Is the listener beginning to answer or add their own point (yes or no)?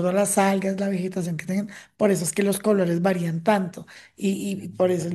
no